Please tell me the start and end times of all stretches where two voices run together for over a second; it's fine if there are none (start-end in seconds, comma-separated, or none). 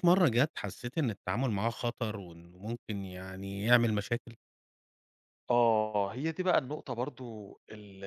none